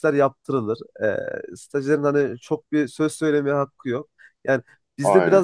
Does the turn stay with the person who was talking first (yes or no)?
yes